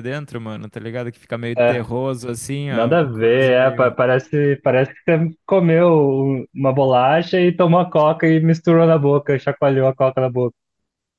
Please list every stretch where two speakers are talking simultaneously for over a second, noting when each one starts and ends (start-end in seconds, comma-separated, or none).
2.7-3.9